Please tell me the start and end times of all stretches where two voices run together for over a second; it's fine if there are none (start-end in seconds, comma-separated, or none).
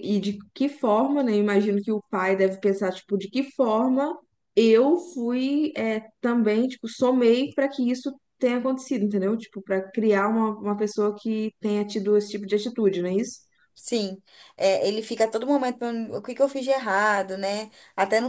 none